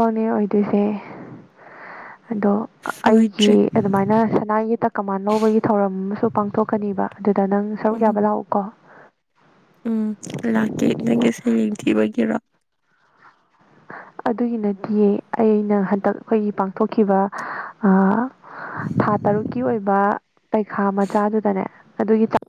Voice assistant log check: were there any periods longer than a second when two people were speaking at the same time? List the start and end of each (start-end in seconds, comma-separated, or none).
none